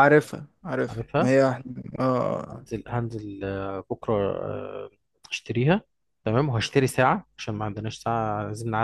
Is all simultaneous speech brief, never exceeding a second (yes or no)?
yes